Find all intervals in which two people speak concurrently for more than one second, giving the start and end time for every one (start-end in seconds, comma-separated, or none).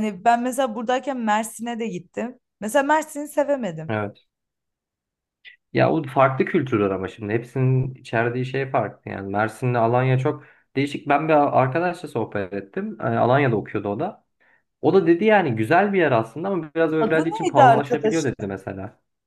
17.0-18.4